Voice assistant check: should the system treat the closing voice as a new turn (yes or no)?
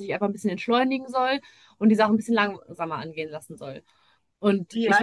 yes